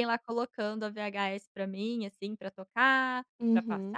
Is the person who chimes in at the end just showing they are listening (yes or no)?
no